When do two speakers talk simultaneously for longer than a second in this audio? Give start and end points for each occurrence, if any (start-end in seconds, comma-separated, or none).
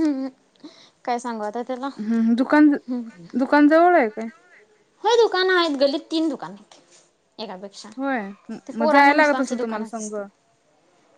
8.7-10.1